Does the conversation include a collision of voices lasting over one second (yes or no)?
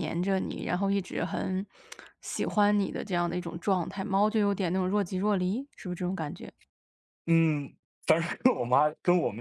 no